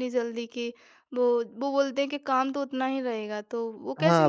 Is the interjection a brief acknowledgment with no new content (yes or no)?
no